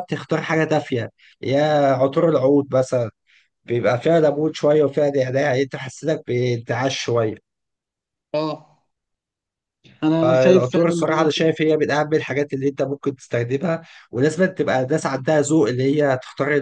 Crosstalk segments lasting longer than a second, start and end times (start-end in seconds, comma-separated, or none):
10.2-11.5